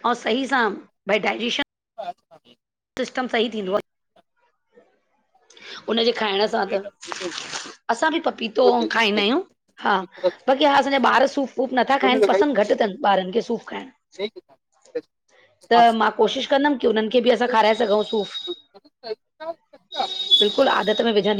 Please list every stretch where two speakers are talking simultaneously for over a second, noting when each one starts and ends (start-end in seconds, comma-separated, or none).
none